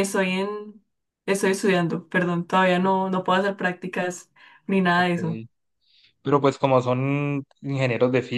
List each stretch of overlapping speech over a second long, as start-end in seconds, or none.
none